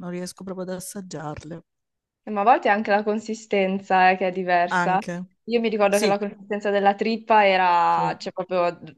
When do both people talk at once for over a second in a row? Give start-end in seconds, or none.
none